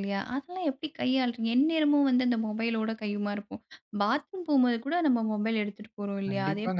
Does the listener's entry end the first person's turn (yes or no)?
yes